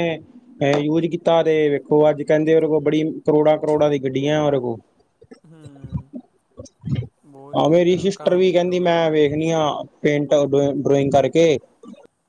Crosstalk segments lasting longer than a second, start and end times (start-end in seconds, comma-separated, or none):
7.6-9.3